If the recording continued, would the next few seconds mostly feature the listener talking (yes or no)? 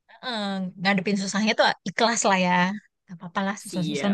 yes